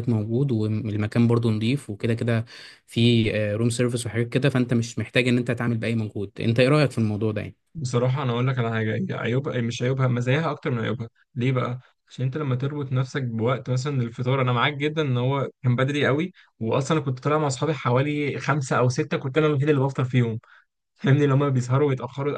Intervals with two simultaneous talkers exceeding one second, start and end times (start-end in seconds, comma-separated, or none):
none